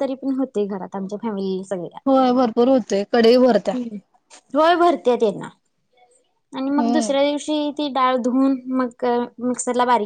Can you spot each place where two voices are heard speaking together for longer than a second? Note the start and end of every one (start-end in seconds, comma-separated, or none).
none